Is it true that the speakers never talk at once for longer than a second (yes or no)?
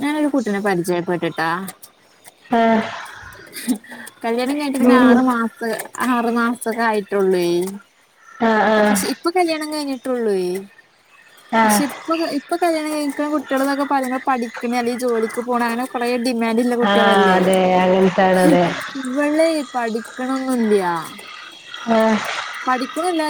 yes